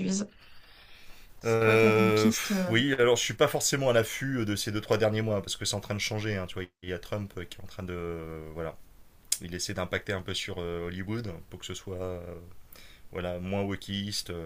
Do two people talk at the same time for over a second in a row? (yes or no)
yes